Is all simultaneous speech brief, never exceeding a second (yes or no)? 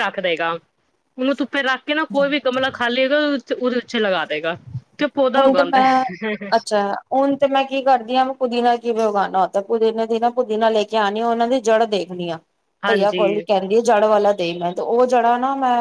yes